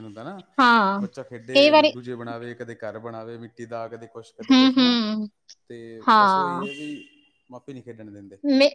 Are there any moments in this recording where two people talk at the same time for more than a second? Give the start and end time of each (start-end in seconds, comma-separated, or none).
none